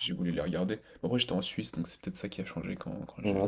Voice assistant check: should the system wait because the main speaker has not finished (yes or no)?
no